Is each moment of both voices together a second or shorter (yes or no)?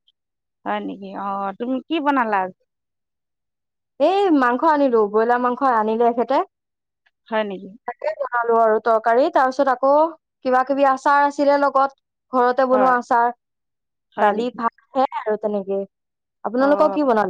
yes